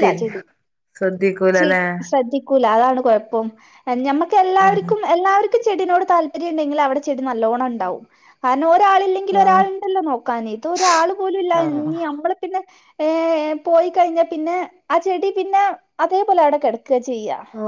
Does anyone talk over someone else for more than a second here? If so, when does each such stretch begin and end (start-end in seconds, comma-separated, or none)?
none